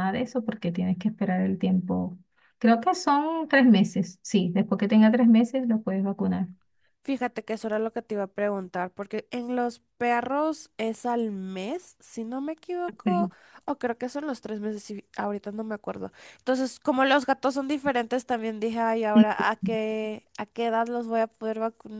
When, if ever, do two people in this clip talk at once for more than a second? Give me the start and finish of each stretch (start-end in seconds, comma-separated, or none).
none